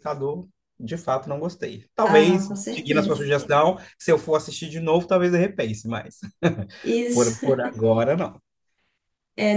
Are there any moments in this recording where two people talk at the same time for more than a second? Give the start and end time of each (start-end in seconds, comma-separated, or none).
2.0-3.3